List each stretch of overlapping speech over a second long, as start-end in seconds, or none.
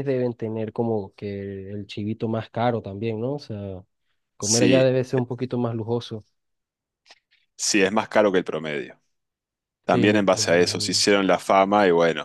9.9-11.1